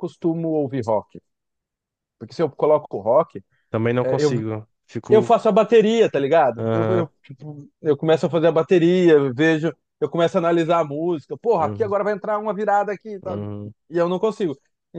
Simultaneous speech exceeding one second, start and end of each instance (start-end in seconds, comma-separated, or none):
none